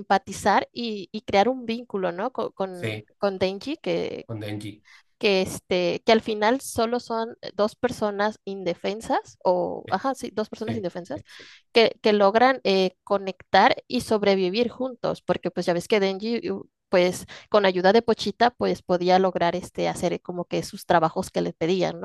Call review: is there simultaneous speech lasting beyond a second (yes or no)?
no